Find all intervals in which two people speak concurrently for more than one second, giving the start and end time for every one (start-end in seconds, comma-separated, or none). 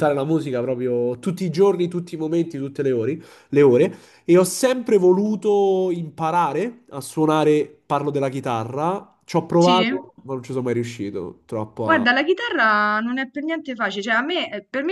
none